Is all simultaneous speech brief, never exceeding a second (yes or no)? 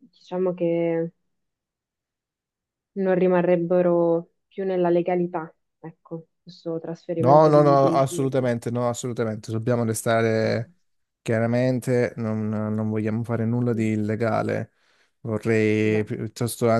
no